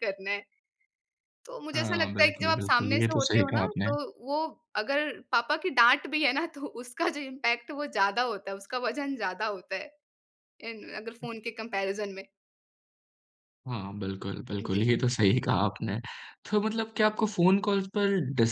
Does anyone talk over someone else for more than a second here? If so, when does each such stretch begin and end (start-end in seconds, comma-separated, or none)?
1.7-3.9